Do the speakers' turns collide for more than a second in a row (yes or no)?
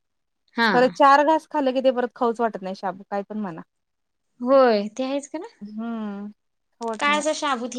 no